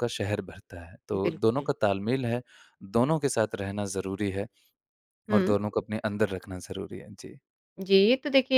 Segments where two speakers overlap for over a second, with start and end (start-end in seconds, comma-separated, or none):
none